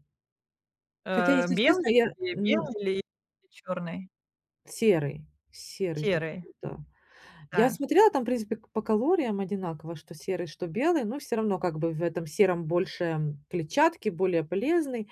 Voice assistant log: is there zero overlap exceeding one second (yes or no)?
no